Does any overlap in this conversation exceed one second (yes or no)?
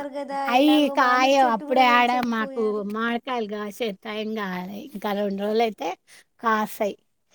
yes